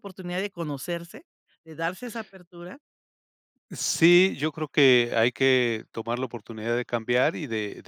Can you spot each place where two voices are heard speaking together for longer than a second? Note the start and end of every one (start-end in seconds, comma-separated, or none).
none